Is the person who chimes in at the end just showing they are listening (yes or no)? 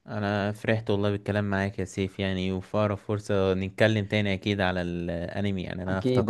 yes